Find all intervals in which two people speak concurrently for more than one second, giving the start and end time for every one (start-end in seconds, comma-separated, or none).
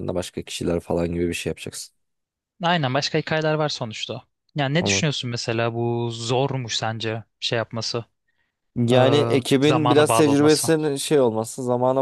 8.9-10.7